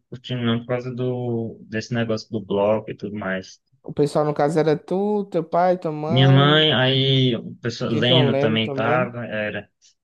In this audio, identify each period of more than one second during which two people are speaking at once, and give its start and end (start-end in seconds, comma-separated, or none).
7.9-9.2